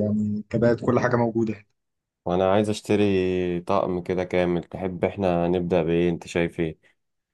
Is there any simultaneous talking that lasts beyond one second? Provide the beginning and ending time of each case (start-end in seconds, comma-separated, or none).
none